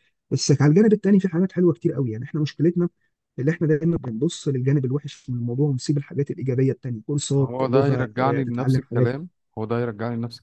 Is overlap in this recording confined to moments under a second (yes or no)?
no